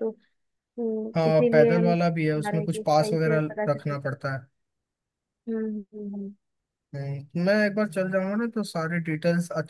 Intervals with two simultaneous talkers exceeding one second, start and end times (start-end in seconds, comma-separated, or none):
1.1-4.0